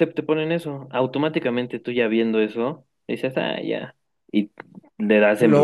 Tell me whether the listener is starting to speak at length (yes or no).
no